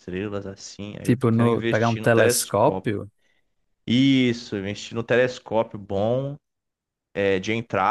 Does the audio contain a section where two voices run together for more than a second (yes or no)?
yes